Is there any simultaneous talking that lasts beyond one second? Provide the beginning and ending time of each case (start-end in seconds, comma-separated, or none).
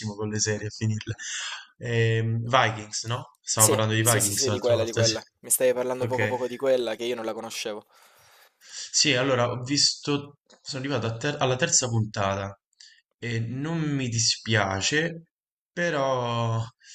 3.6-5.1